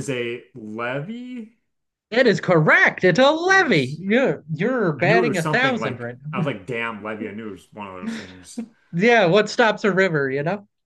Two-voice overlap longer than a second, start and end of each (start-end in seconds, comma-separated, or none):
5.0-6.5